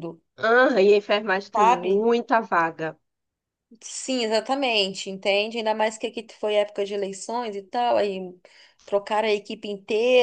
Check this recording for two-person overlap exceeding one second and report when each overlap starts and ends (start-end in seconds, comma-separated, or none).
none